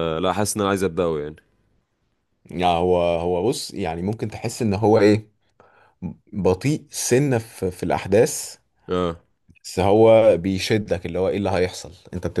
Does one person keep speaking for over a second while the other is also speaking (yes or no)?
no